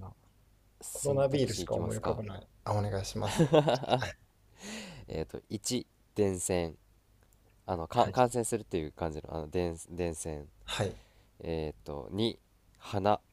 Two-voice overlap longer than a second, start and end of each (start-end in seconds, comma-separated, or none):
0.9-2.2